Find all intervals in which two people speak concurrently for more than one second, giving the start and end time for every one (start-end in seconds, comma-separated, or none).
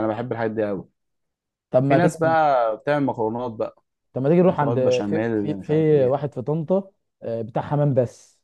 4.5-6.2